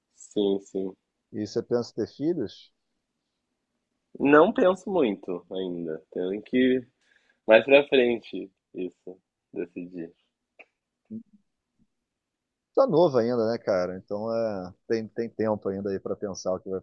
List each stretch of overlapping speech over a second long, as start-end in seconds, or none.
none